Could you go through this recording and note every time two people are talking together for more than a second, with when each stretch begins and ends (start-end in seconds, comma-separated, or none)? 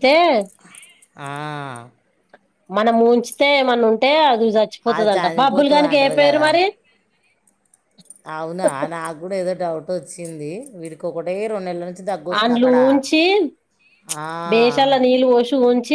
4.9-6.5